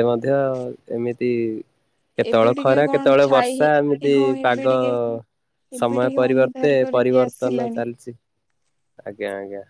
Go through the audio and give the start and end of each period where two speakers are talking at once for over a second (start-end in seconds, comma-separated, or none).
2.3-4.7, 5.8-7.8